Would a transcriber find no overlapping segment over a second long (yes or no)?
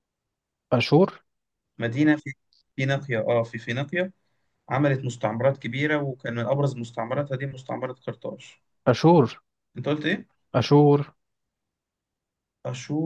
yes